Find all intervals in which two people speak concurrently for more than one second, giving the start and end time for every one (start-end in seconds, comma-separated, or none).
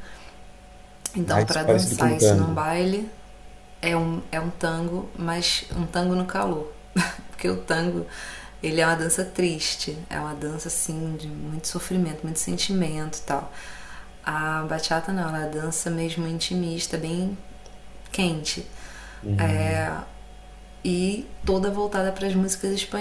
1.2-2.7